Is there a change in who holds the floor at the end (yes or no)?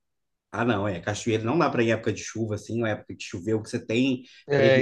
no